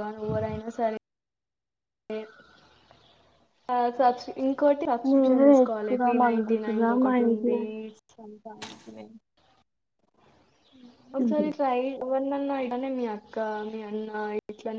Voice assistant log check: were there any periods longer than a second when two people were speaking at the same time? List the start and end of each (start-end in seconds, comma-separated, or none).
5.1-7.6